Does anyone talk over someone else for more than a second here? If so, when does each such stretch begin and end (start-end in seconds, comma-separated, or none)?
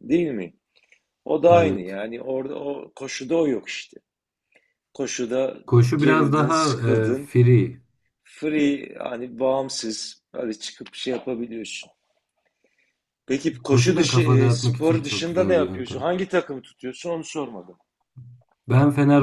6.0-7.3, 13.7-16.1